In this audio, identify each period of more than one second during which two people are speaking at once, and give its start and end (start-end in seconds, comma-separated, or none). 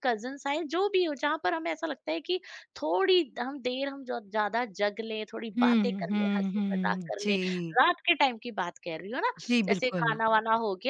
5.6-7.4